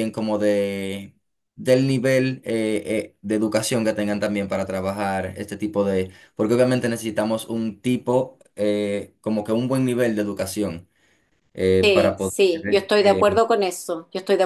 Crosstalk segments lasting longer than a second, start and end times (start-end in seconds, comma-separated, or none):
11.8-13.2